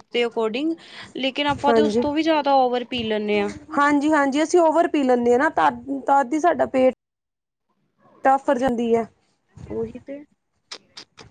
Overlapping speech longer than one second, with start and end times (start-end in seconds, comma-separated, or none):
none